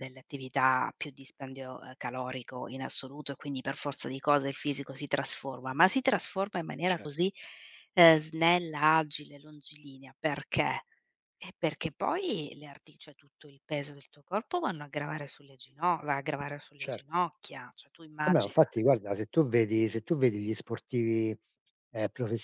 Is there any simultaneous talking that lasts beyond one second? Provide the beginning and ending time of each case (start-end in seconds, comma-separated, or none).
none